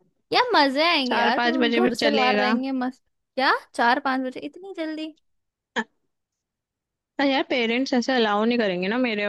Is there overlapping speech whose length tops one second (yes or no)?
yes